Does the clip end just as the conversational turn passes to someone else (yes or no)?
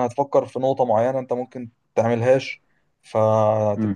no